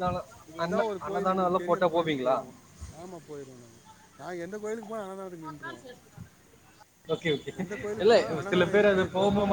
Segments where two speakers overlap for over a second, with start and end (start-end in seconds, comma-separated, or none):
0.7-2.4